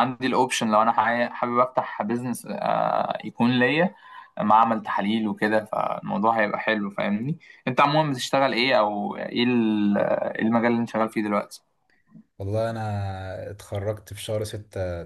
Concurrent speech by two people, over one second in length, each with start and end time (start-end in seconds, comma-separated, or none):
none